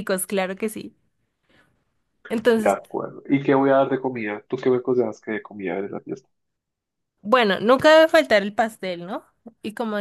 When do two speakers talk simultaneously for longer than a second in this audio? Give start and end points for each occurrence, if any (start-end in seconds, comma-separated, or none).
none